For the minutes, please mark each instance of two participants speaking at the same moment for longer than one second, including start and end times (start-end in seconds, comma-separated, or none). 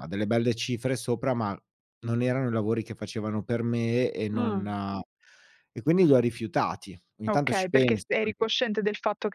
7.3-8.5